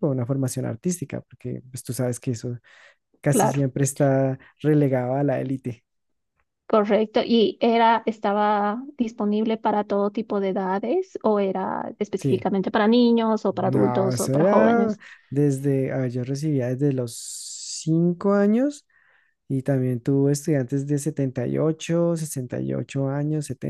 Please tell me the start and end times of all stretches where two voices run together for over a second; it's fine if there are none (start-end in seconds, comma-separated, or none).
13.6-15.0